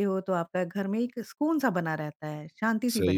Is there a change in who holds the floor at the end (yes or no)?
yes